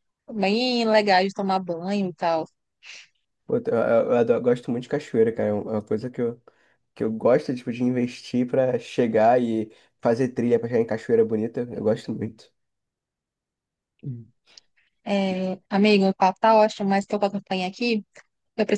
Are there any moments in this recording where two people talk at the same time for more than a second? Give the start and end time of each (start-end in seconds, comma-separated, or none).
none